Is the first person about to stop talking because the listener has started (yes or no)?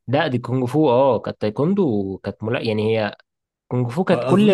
yes